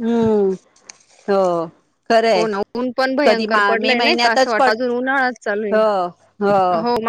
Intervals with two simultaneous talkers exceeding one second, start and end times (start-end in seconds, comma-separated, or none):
3.2-4.8